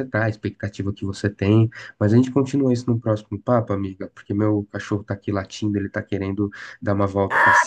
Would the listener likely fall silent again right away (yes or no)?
no